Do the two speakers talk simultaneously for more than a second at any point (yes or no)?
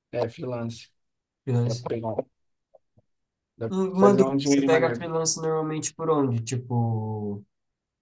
yes